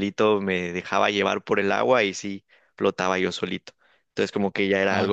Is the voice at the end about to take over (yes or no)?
no